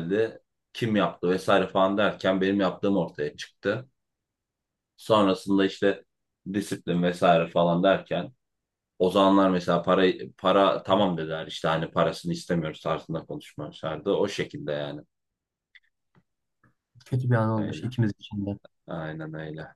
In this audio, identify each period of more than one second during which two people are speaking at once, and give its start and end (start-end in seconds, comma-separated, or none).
none